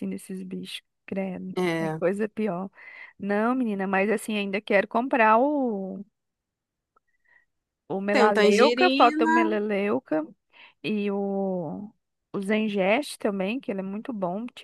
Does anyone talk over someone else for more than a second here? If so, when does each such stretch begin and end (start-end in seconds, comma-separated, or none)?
8.1-9.6